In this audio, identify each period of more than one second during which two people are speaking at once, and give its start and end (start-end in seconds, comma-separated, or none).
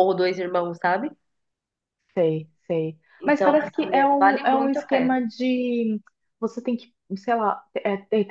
3.2-5.2